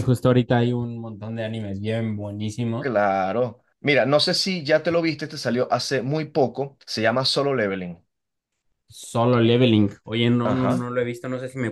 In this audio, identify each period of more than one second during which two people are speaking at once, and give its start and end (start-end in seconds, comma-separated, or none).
none